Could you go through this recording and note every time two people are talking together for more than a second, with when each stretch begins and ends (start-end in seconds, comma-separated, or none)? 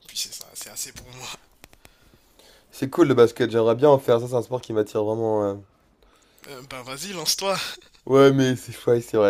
none